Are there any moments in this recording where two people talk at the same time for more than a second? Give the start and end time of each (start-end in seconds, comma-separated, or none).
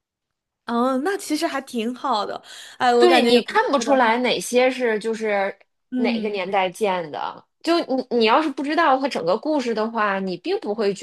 3.0-4.2